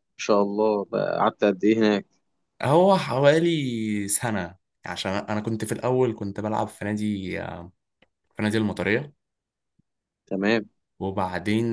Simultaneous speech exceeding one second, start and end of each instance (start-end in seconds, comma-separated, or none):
none